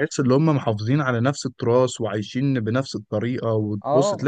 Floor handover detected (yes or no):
no